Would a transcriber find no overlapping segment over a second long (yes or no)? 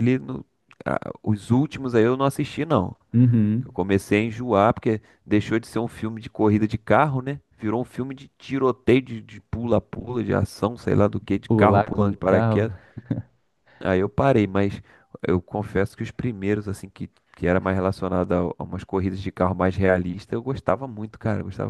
no